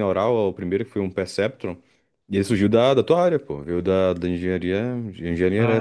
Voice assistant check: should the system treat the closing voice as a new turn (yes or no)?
no